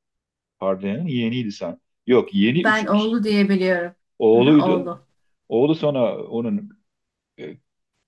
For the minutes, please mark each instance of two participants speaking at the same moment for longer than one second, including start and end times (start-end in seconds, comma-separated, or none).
none